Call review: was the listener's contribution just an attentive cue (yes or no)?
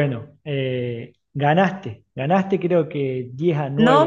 no